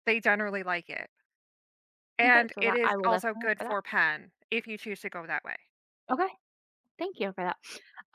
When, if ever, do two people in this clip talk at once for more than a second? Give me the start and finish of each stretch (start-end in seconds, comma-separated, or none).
2.2-3.8